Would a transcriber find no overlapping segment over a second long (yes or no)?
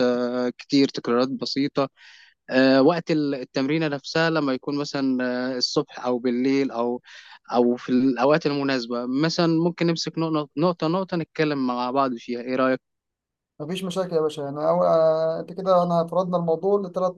yes